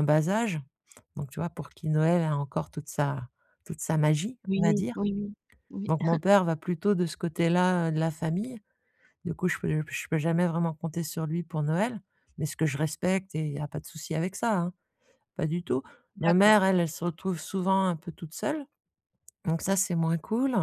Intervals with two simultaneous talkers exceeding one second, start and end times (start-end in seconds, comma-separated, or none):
none